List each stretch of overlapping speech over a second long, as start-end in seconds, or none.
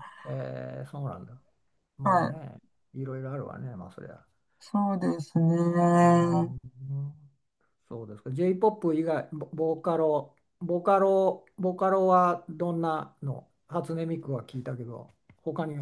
none